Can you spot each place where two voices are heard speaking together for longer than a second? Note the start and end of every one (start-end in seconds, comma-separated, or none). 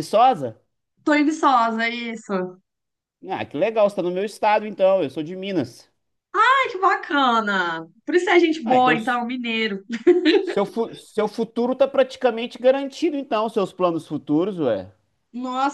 none